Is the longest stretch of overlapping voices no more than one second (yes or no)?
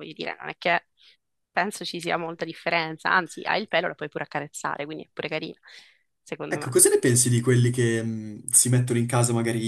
yes